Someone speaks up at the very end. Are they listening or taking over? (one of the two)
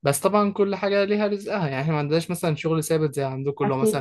listening